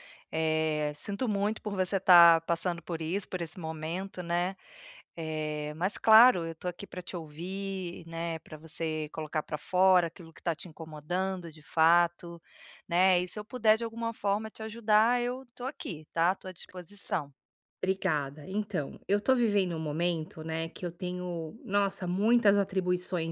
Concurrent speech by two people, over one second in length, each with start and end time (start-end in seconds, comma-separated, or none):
none